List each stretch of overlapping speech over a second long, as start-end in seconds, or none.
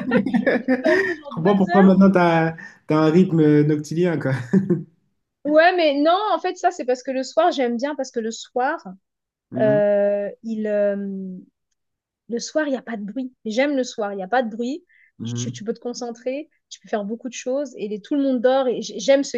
0.6-1.9